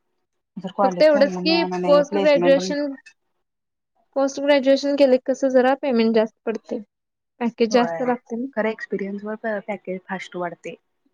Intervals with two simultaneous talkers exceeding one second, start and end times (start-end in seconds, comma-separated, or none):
0.8-2.6